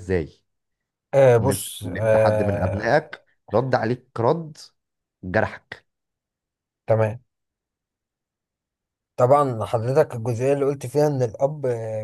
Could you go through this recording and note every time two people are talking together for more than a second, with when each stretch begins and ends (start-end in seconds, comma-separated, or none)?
1.4-3.0